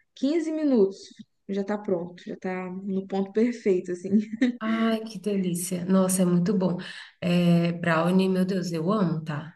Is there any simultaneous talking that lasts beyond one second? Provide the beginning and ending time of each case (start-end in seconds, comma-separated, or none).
none